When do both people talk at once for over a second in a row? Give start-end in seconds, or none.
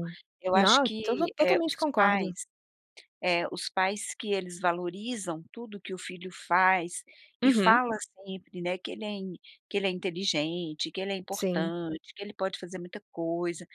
0.5-2.3